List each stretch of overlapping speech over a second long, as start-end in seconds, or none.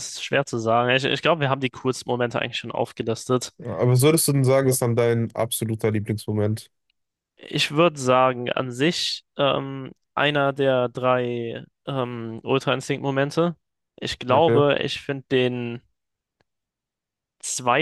none